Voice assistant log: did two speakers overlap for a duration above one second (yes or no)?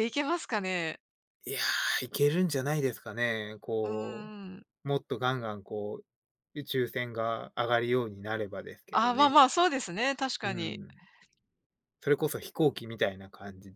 no